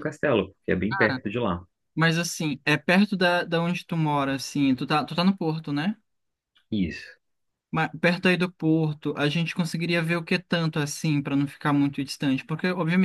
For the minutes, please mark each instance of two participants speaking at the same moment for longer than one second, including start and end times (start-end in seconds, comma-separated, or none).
none